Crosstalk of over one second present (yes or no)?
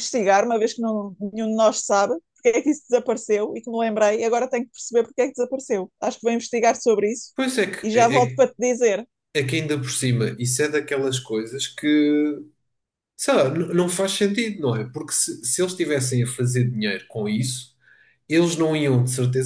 no